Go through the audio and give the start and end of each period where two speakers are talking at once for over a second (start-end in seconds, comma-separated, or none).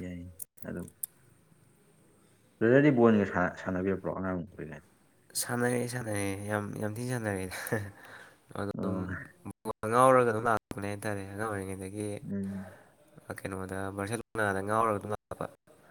none